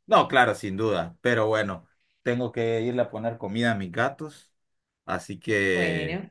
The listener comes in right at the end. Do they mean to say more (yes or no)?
no